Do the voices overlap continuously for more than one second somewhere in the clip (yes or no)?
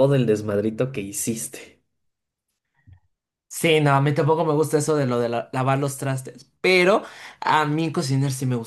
no